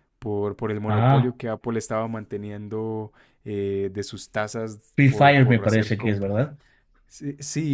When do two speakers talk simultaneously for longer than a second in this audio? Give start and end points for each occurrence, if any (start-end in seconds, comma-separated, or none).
5.0-6.4